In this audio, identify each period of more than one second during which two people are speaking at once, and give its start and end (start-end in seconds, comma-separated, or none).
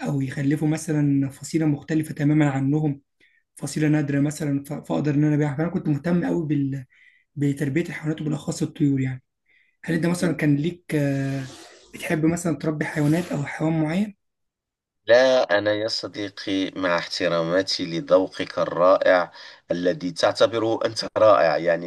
none